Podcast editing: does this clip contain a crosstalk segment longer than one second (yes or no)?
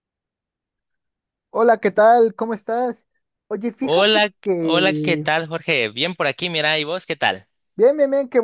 yes